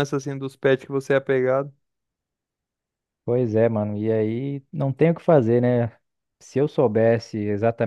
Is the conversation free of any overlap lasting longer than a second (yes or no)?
yes